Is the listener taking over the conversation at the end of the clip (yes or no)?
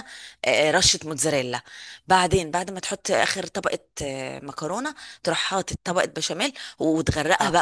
no